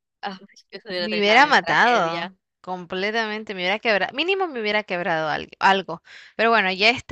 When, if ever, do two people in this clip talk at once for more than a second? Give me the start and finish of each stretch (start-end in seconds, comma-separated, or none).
1.0-2.3